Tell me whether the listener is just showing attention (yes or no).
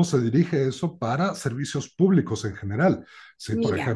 yes